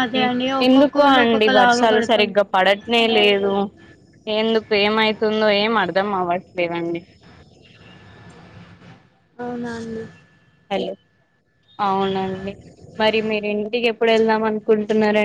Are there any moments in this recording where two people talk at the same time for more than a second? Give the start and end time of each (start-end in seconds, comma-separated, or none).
0.7-2.3